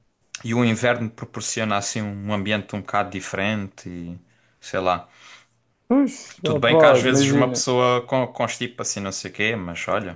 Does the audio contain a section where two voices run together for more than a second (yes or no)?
yes